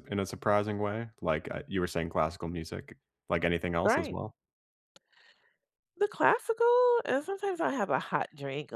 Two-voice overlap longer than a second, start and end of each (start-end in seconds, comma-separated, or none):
none